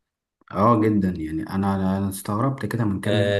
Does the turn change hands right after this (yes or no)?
yes